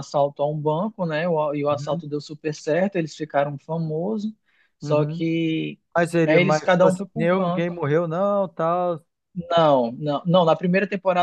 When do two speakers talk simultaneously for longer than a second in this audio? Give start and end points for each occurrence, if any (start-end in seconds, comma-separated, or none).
6.2-7.7